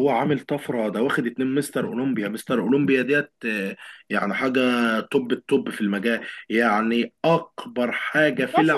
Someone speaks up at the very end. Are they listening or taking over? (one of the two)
taking over